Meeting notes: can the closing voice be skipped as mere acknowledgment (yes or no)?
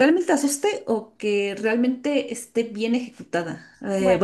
yes